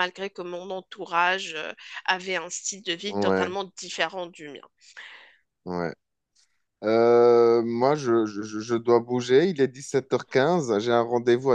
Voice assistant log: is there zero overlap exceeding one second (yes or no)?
yes